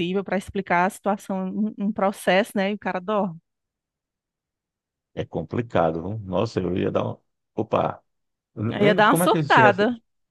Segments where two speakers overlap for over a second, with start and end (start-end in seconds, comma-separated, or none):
none